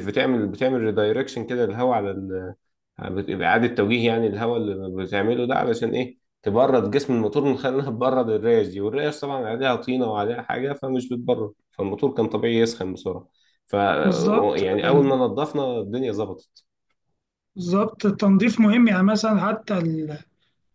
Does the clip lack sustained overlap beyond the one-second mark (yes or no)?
yes